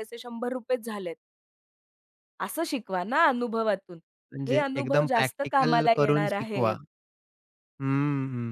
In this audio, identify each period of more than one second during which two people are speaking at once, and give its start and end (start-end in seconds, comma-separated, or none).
4.5-6.8